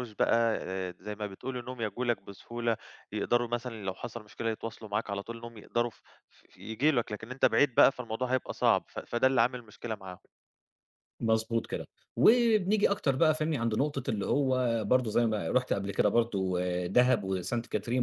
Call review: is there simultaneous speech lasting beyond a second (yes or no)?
no